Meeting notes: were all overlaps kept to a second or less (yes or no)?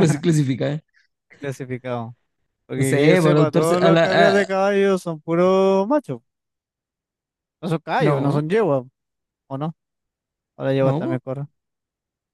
no